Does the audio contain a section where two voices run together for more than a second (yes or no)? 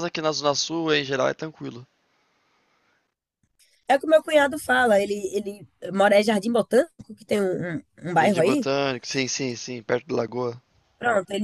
no